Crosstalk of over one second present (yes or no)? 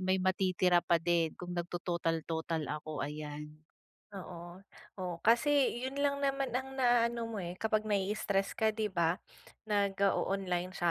no